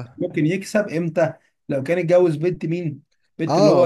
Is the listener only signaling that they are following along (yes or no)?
no